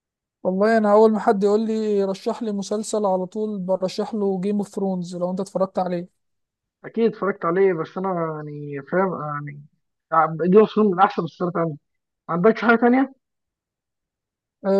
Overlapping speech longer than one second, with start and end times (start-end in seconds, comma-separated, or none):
none